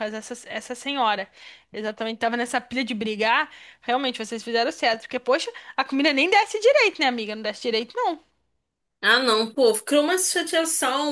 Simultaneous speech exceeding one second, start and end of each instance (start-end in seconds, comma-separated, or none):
none